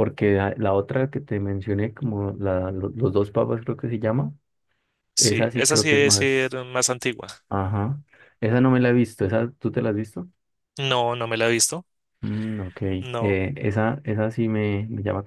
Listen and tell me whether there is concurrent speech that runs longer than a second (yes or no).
yes